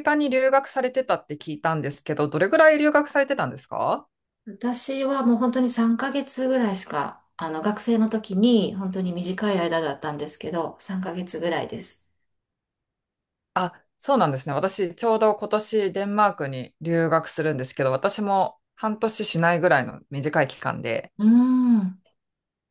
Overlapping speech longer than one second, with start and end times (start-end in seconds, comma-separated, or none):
none